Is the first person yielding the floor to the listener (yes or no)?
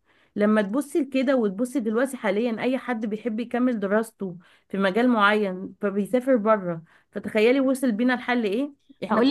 yes